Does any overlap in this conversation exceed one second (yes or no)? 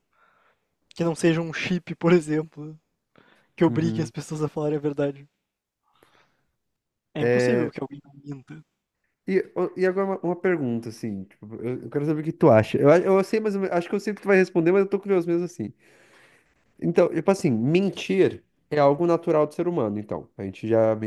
no